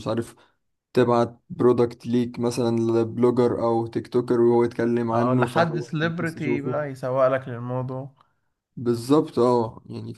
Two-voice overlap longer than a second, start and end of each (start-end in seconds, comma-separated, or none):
5.1-6.8